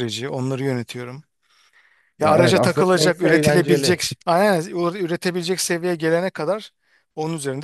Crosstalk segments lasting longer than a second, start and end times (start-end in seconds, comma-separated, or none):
2.2-4.1